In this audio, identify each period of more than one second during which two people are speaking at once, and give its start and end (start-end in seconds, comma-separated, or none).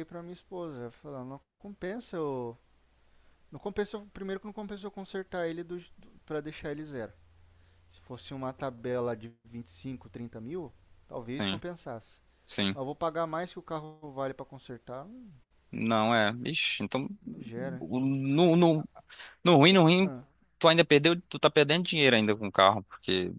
none